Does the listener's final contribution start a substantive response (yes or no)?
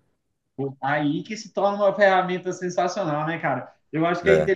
no